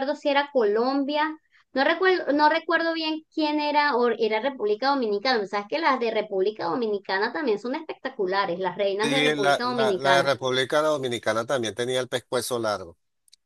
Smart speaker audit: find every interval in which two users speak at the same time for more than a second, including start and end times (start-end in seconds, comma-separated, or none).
9.0-10.3